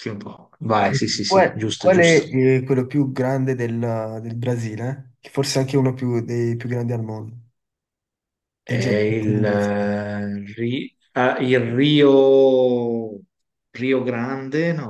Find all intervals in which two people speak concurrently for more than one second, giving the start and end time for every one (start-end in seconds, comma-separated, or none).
0.8-2.2, 8.7-9.9